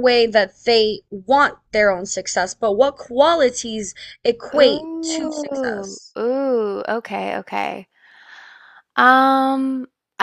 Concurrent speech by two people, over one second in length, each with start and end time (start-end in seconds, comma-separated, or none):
4.6-6.2